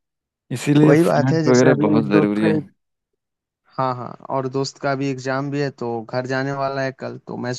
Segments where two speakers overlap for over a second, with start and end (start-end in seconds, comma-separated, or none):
0.9-2.5